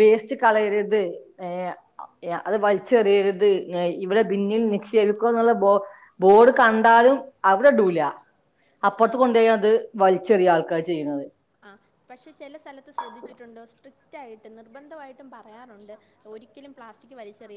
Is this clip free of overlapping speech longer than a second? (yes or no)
yes